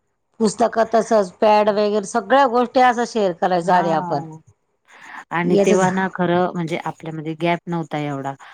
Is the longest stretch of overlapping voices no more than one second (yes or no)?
yes